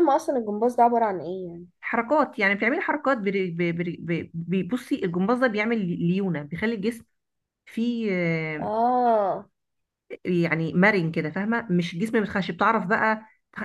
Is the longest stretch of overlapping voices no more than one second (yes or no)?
yes